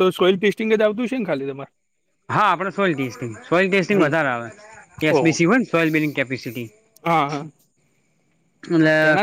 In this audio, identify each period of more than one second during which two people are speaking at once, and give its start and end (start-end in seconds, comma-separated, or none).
none